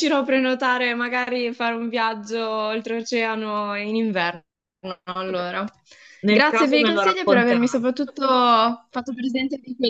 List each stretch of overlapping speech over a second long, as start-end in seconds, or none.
6.3-7.8